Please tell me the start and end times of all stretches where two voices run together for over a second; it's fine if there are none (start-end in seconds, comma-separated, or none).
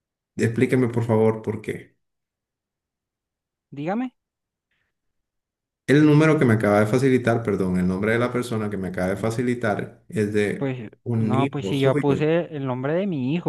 10.6-12.2